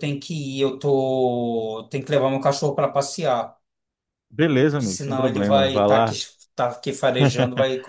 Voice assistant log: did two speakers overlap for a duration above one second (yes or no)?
yes